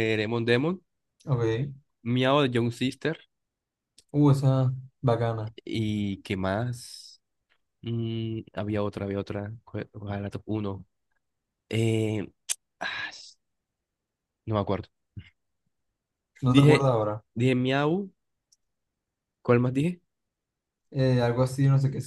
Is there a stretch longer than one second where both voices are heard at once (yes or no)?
no